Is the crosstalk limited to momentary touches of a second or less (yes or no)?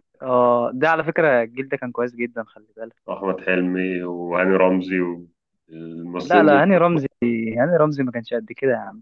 yes